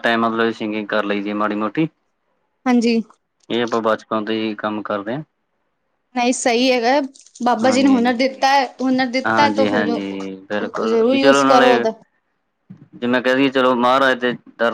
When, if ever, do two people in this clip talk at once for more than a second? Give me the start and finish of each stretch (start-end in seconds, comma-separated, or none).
9.3-11.8